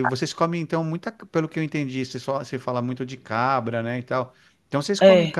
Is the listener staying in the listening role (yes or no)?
yes